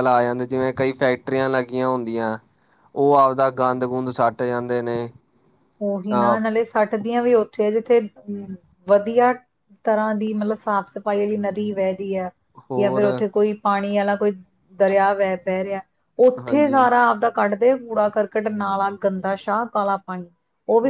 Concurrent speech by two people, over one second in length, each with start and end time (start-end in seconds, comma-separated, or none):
none